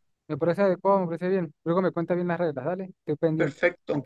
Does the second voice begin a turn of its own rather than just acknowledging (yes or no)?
yes